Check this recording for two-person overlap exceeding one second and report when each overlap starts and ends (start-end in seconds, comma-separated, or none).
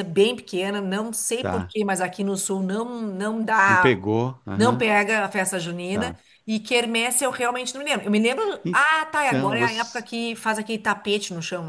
8.6-10.0